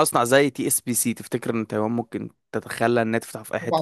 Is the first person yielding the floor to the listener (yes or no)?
yes